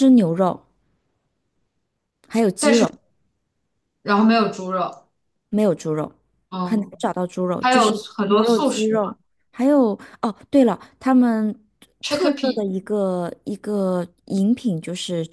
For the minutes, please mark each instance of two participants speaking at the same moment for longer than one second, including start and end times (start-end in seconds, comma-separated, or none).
7.6-9.2